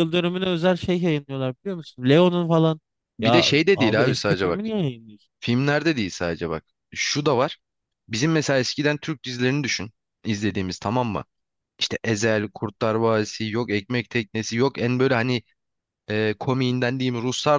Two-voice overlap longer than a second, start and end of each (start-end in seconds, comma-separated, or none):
3.2-4.6